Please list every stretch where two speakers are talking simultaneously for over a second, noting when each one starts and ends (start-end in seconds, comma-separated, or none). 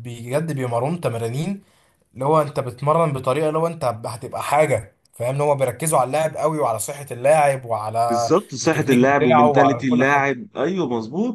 8.1-10.3